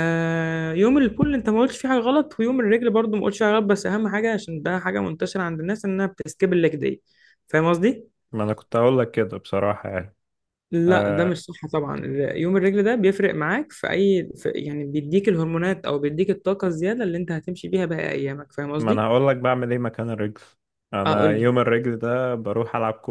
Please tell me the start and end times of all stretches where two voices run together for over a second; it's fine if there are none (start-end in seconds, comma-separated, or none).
none